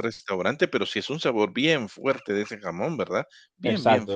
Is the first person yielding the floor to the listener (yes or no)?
yes